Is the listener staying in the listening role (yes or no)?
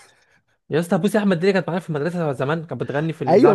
no